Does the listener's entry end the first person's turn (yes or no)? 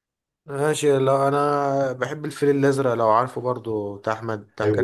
yes